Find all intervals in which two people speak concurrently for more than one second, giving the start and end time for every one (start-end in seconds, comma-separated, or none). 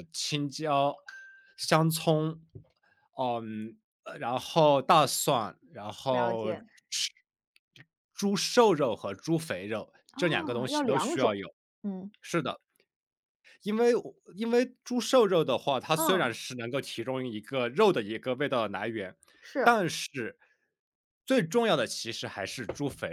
10.1-11.4